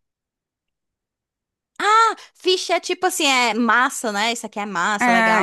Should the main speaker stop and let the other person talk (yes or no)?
yes